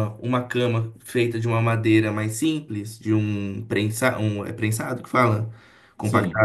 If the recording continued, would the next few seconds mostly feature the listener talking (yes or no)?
no